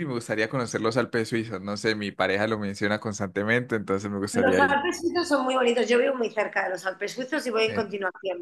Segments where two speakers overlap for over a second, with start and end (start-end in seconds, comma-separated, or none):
none